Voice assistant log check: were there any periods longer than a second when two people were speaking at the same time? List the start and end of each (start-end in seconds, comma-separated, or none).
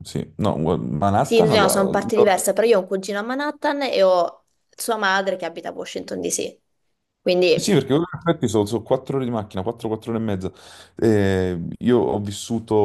1.2-2.5